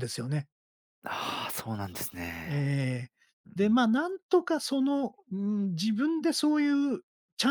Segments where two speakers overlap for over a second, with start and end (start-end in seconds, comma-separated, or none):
none